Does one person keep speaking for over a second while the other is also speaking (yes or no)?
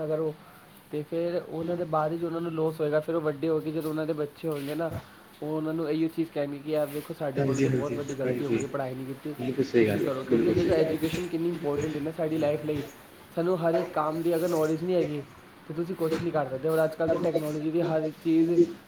yes